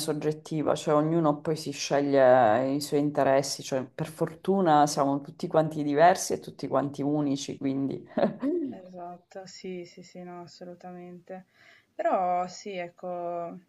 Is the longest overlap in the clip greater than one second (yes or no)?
no